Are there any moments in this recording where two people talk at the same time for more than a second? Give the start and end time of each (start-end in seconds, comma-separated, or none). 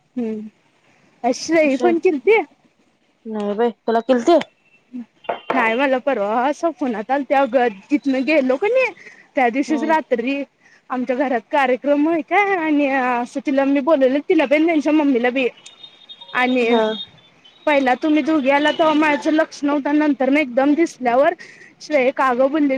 none